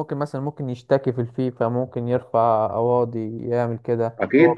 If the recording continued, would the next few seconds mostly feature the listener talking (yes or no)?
yes